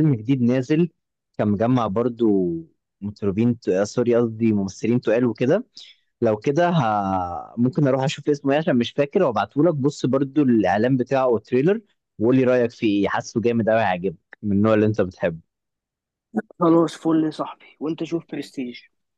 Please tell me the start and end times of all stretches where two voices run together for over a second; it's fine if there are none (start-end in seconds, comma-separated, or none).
none